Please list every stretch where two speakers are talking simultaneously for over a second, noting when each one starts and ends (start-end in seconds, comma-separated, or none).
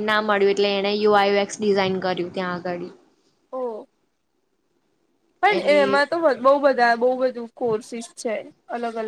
none